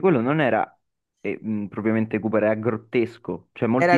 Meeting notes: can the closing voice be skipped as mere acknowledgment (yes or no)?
yes